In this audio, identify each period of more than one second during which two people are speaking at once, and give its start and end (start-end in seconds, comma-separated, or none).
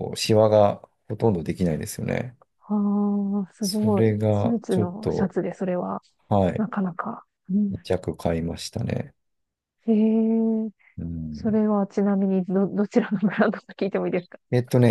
3.6-5.3